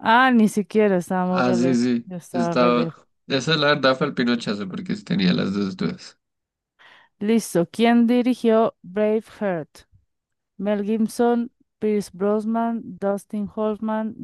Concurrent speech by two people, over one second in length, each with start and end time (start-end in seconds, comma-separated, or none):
1.3-3.0